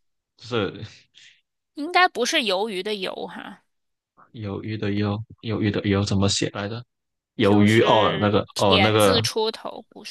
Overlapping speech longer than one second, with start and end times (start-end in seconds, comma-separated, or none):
7.4-9.2